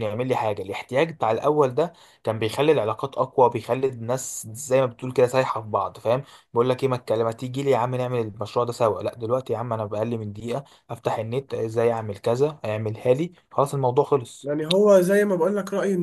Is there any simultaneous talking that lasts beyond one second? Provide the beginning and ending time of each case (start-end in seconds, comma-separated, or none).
none